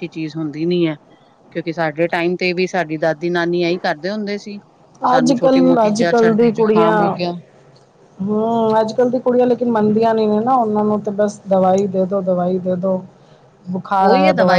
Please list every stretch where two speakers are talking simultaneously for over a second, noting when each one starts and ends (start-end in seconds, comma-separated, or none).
5.2-7.0